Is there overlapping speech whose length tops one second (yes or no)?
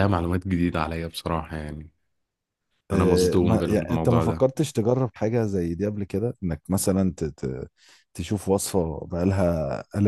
yes